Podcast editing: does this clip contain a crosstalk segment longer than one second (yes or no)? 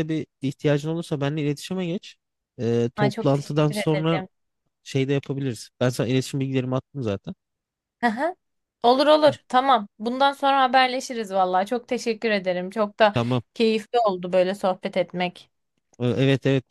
yes